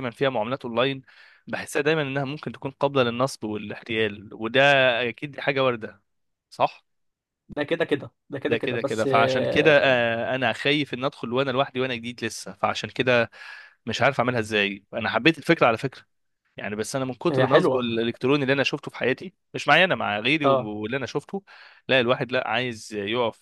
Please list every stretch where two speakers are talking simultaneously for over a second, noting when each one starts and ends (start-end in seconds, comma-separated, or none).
8.5-9.9